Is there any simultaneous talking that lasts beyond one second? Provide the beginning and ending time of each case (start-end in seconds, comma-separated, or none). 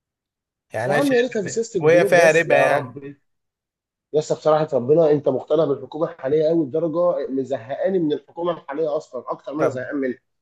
0.8-3.0